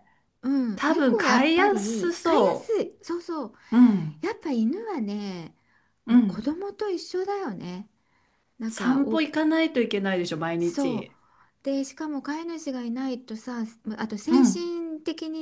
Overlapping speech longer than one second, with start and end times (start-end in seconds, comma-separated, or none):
0.7-2.8